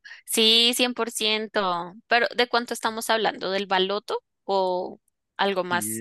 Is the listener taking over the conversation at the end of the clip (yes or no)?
yes